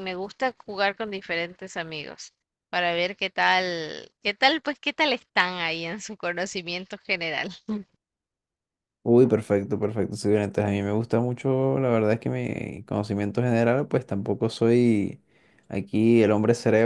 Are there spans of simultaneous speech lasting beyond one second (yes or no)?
no